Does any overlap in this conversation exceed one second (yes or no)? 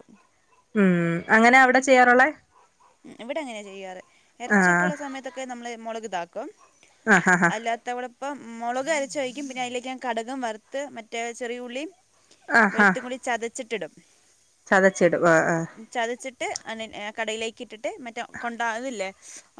no